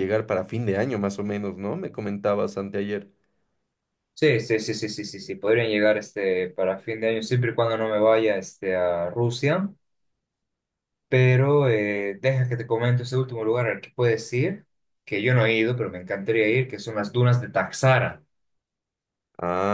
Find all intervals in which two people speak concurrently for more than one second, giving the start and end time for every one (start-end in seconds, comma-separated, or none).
none